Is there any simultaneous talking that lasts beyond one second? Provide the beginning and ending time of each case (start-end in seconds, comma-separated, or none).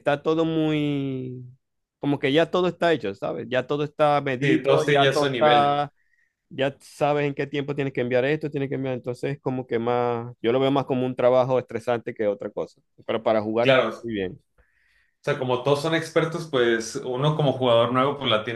4.4-5.8